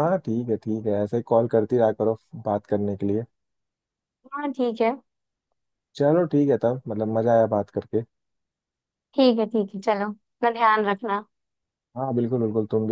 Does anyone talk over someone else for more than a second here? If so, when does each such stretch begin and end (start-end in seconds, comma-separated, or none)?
none